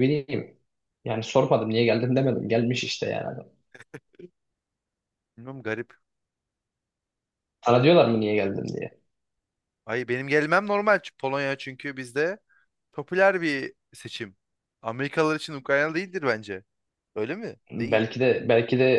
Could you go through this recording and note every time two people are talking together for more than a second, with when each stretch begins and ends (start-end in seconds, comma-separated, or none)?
none